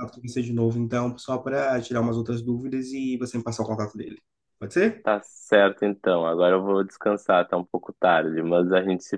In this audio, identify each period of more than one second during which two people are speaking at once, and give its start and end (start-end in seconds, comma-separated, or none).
none